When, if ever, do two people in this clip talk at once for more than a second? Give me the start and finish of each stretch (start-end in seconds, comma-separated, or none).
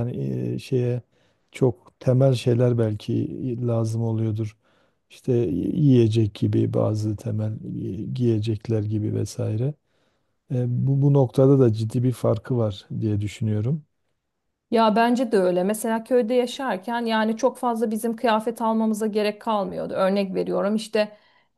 none